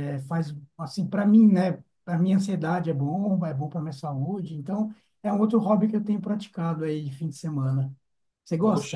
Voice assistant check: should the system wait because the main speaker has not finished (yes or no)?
no